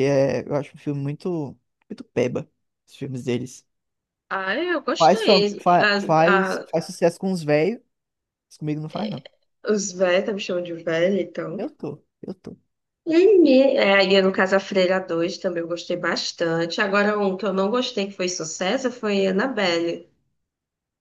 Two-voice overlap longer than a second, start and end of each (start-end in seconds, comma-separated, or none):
5.0-6.7